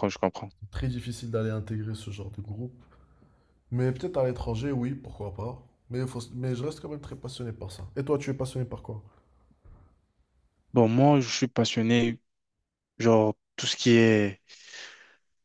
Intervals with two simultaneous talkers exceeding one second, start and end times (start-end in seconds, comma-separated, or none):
none